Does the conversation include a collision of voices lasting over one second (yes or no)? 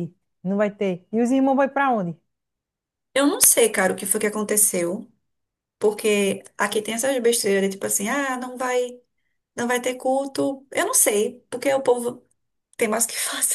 no